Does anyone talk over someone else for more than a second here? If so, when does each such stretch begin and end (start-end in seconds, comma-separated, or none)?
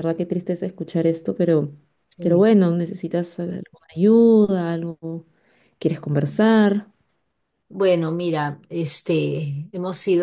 none